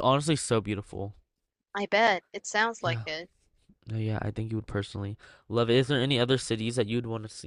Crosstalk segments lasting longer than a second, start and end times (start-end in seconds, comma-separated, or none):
none